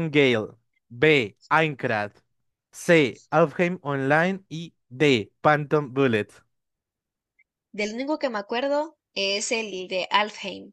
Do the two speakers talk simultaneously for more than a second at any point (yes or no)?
no